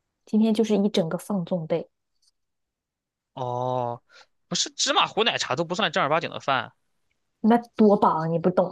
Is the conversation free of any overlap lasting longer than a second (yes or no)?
yes